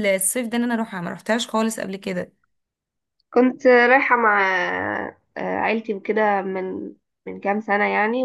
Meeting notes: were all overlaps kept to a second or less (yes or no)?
yes